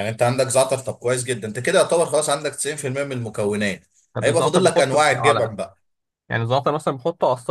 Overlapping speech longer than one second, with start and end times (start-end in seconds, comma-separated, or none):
4.2-5.5